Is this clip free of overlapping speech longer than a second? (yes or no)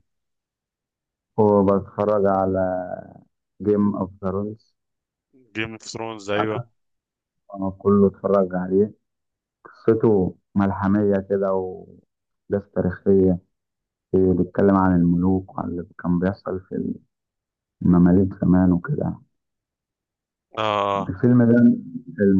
yes